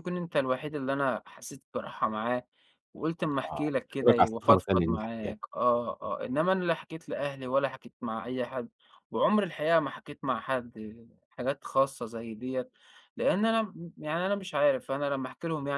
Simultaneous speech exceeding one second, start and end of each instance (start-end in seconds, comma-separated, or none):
3.5-5.3